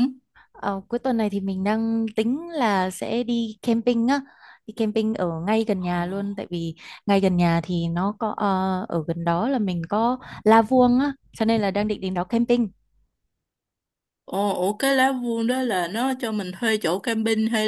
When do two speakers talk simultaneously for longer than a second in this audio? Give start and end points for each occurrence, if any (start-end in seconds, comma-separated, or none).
none